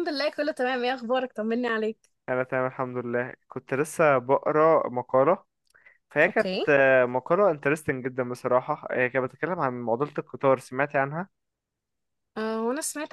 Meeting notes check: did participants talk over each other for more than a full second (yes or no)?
no